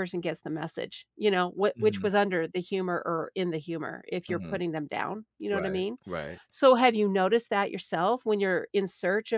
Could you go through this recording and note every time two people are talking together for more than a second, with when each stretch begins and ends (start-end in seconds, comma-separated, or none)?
none